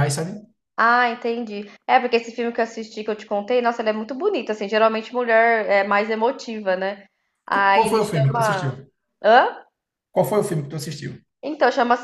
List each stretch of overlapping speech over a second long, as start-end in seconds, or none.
7.5-8.7